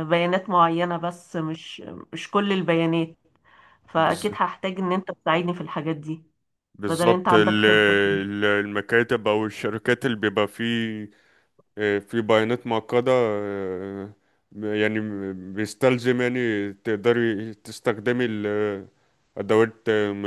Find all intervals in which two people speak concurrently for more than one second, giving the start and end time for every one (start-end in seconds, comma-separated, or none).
6.9-8.3